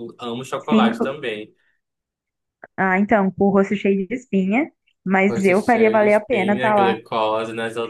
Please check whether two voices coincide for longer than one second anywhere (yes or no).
yes